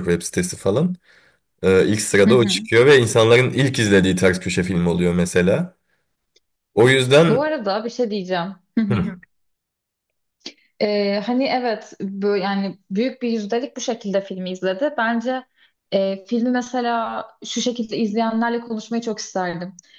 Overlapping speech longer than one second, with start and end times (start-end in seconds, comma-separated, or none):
none